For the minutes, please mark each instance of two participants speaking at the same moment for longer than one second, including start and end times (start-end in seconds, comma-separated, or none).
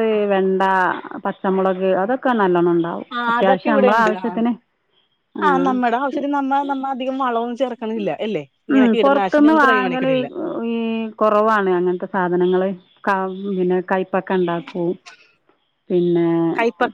8.7-10.1